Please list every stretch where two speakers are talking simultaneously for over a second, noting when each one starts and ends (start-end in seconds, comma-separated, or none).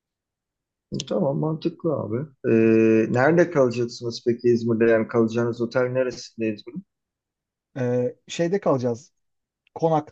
none